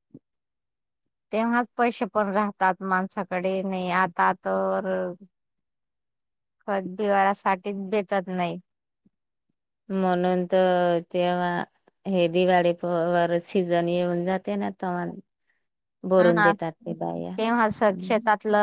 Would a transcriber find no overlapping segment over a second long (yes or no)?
yes